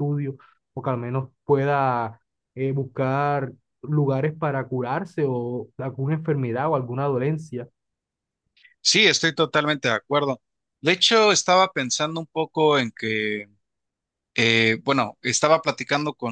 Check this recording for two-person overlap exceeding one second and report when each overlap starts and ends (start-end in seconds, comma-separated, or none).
none